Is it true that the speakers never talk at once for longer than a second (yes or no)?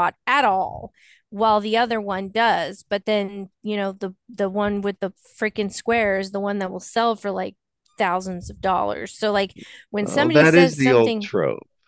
no